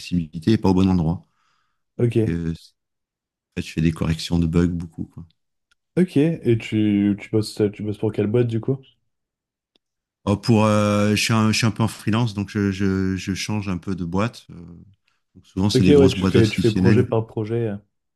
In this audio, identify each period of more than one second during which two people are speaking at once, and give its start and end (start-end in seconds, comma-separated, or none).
15.8-17.1